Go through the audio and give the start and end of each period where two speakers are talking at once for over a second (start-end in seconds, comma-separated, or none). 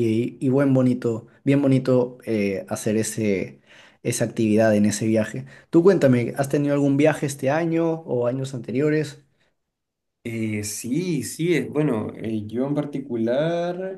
none